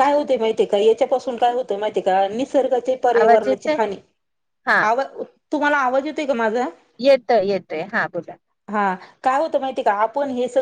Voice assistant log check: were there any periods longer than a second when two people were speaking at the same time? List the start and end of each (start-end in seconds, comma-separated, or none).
none